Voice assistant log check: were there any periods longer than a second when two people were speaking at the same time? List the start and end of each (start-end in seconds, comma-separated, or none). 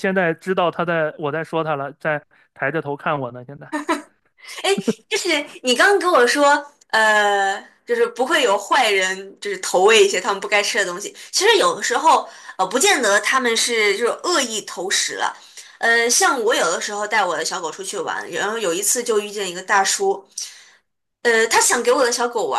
none